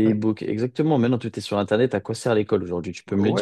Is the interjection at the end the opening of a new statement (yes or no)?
yes